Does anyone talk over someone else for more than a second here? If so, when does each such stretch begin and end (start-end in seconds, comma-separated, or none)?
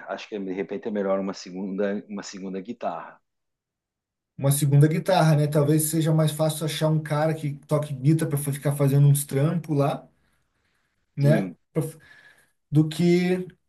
none